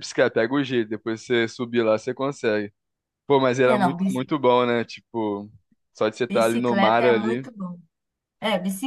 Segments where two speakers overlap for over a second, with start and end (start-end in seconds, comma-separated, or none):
6.3-7.5